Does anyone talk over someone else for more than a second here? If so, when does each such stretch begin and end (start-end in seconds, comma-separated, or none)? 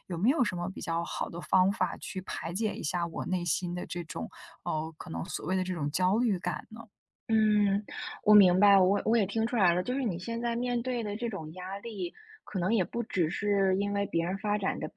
none